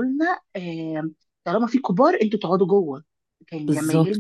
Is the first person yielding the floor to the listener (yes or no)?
no